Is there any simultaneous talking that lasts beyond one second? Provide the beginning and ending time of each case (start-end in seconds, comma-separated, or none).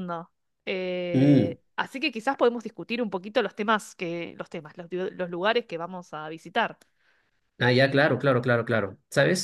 none